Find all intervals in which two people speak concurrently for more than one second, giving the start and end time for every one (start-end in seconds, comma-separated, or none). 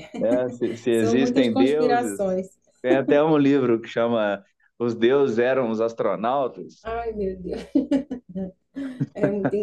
0.9-2.2